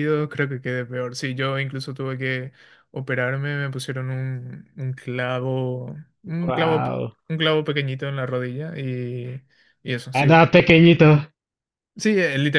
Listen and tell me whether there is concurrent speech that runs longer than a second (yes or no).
no